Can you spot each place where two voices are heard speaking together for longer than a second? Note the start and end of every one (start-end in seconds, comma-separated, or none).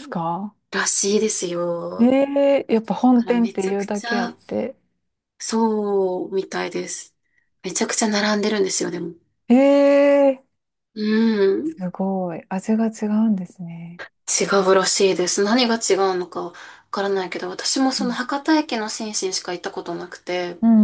3.1-4.4